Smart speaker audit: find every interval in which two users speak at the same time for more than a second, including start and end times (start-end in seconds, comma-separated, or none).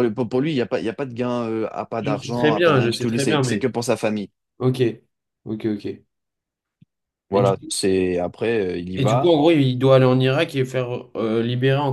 2.0-3.7